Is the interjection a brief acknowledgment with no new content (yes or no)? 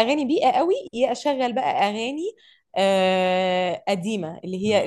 yes